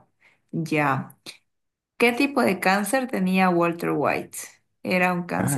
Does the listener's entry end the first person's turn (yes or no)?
no